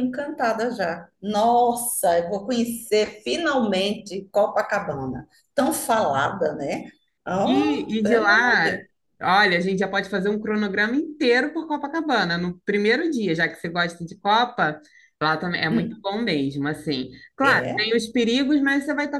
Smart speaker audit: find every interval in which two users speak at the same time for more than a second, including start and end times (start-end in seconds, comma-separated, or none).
7.4-8.8